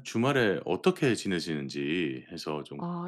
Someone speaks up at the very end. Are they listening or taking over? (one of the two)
taking over